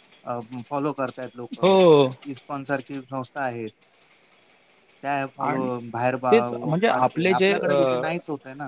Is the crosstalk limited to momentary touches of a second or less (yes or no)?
no